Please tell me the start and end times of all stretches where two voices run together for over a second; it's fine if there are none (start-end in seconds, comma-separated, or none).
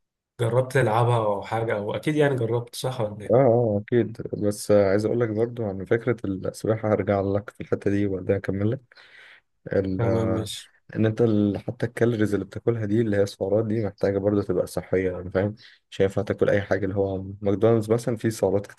none